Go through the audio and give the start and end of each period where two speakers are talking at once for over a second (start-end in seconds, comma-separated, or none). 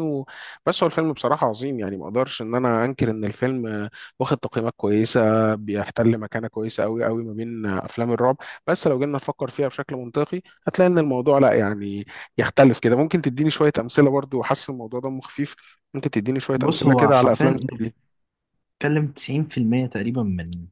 16.6-17.9